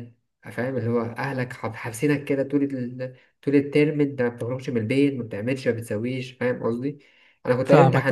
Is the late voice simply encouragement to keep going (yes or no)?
yes